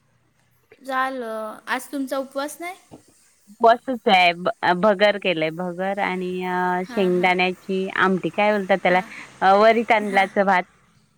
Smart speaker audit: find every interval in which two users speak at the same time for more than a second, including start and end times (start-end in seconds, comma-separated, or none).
none